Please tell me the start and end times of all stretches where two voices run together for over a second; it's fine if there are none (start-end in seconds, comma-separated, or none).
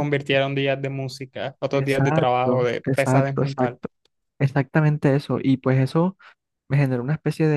1.7-3.8